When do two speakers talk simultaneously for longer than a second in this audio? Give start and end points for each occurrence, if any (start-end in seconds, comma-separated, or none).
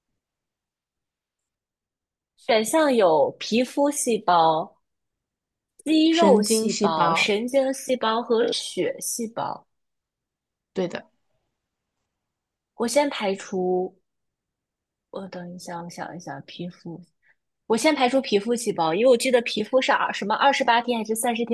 6.1-7.3